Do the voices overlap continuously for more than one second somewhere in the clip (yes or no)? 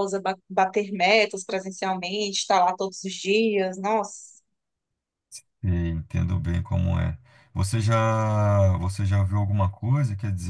no